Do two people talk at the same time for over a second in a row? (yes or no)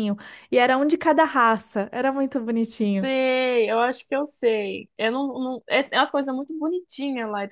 no